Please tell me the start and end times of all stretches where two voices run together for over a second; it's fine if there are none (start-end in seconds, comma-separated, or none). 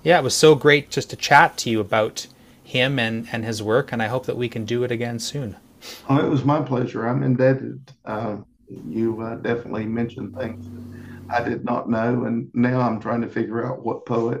none